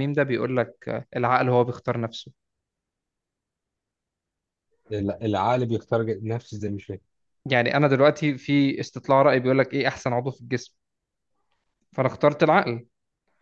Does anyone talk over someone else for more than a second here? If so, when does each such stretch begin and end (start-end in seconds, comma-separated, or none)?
none